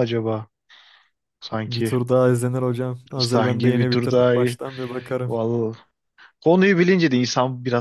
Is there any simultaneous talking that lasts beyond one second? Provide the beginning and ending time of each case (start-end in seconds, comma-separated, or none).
3.2-4.6